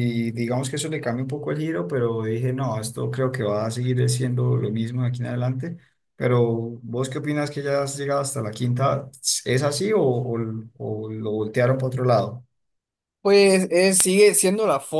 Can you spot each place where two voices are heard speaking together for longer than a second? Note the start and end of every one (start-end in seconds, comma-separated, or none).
none